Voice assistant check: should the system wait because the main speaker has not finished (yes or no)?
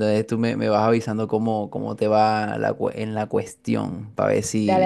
yes